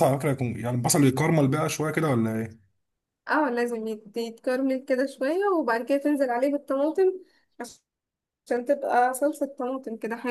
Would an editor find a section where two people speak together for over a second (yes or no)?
no